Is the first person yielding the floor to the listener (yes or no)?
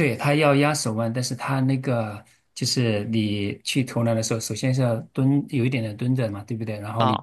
no